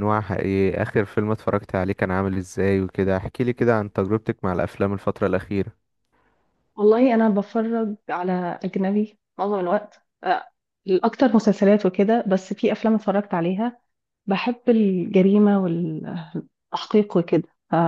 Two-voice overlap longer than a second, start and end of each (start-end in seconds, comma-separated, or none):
none